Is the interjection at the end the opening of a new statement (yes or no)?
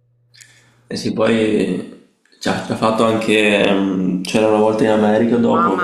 no